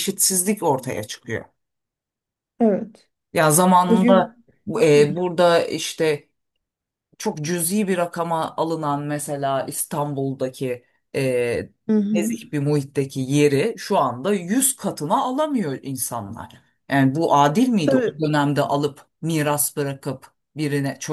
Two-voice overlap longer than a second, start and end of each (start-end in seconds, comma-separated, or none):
none